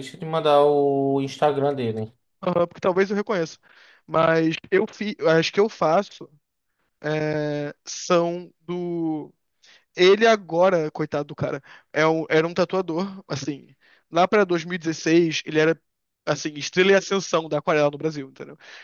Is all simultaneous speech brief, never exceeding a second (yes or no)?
yes